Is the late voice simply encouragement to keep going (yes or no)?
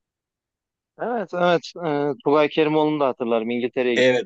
no